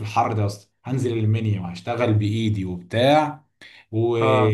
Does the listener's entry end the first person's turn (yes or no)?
no